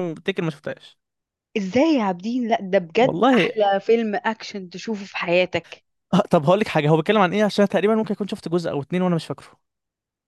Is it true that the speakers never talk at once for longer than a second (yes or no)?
yes